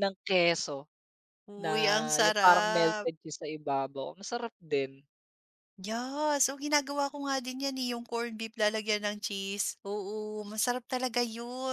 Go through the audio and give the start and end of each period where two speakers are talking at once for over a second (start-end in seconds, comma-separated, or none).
1.6-3.1